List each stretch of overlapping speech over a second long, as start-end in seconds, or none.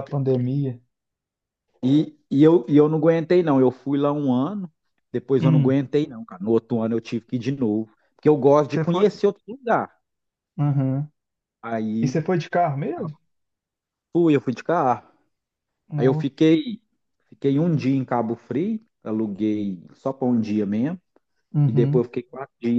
none